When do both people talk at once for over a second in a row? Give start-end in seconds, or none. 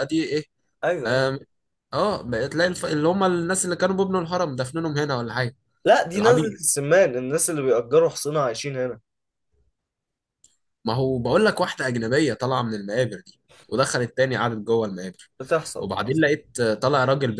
none